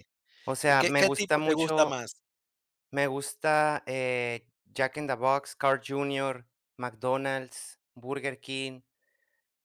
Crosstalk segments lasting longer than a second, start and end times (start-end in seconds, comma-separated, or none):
0.7-2.0